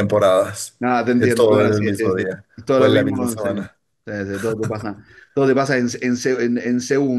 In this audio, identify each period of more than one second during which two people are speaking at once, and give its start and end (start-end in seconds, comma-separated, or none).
1.2-3.5